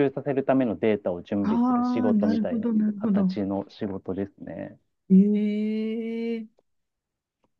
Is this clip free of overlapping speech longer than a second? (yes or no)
no